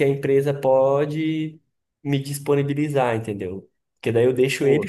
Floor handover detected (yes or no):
no